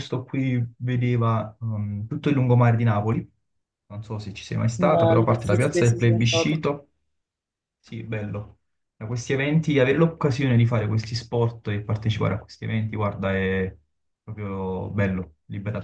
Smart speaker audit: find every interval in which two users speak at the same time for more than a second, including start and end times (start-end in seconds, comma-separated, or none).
4.8-6.7